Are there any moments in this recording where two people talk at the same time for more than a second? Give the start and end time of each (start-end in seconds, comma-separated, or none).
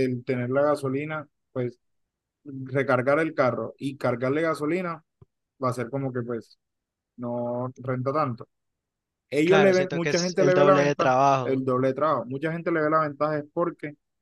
9.4-11.6